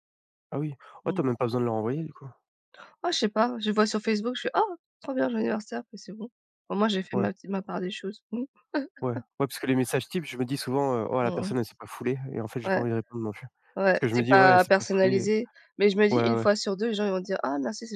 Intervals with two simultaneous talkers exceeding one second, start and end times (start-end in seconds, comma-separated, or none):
13.9-15.3